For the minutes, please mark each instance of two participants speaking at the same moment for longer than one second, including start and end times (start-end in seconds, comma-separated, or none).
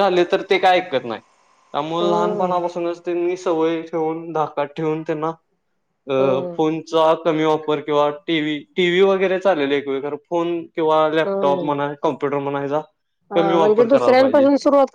none